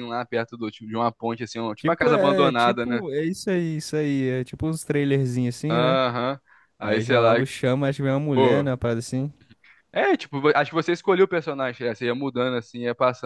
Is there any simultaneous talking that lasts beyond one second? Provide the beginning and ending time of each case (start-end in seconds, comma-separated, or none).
1.8-3.0